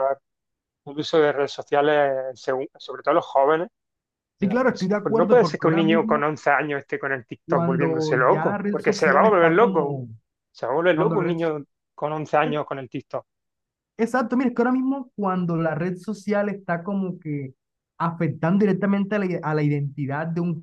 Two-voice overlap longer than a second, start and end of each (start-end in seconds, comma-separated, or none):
4.4-6.3, 7.5-10.0